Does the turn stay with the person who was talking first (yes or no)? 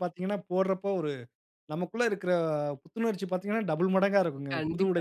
no